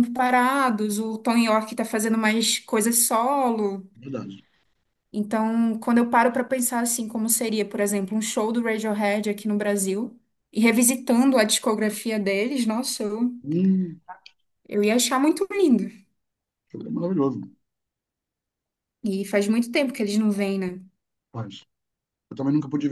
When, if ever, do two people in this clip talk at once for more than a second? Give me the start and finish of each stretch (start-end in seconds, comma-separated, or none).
none